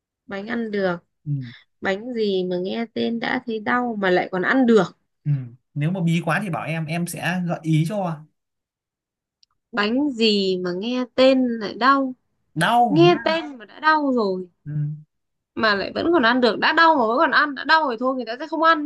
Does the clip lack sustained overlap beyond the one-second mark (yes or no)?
yes